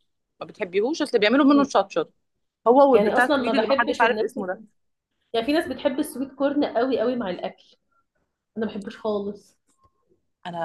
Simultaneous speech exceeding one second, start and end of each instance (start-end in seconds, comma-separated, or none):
2.9-4.4